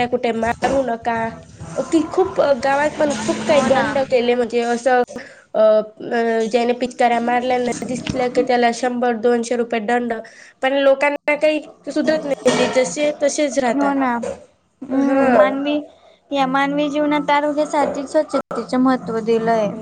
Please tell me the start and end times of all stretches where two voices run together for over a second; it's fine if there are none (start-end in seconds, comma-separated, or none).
none